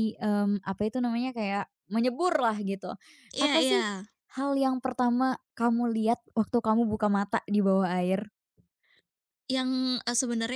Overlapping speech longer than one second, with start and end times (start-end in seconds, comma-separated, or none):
none